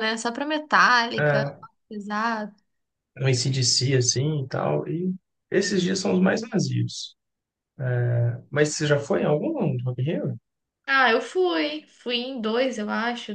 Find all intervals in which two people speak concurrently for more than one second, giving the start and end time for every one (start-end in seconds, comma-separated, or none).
none